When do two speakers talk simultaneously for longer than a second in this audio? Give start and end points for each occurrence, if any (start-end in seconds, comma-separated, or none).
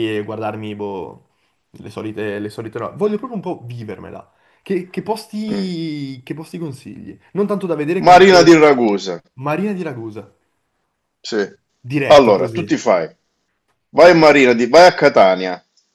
none